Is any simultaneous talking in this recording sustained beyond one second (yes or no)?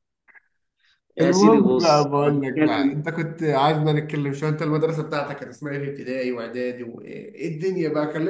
yes